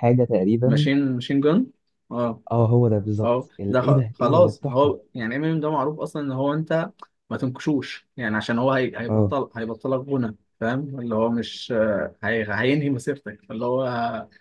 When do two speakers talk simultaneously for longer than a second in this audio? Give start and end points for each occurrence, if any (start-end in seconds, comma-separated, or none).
3.2-5.0